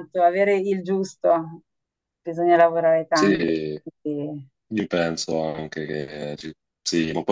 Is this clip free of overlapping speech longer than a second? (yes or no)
yes